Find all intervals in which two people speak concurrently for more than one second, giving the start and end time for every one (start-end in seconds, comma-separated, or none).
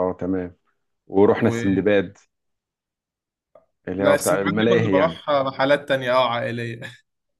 4.0-5.2